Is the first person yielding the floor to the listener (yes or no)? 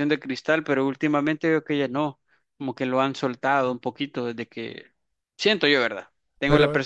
no